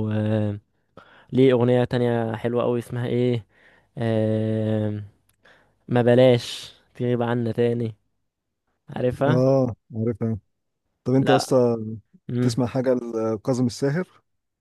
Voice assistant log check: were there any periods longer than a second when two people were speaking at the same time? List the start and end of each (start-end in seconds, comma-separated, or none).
none